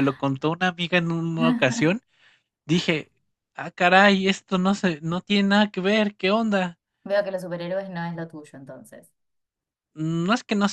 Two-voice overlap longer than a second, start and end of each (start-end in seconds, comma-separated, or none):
none